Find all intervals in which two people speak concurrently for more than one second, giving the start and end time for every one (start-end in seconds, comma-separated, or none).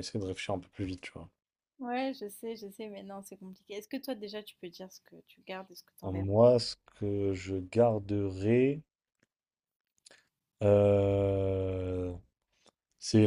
none